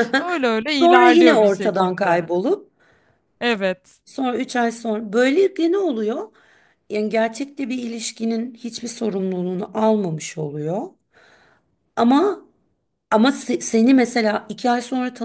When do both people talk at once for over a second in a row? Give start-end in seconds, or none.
0.8-2.2